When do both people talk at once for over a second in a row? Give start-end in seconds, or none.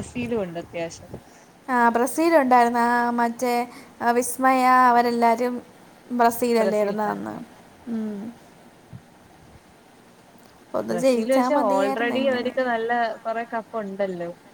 10.9-12.5